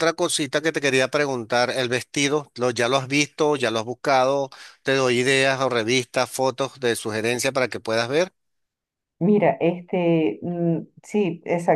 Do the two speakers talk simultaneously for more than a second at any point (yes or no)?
no